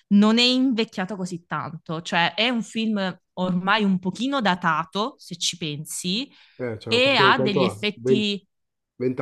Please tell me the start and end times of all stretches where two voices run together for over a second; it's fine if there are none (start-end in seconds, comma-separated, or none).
6.9-8.4